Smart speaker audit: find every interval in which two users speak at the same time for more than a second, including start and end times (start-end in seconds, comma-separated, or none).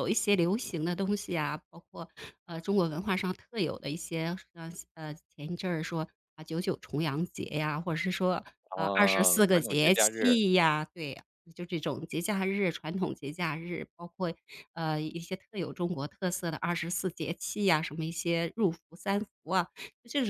8.7-10.3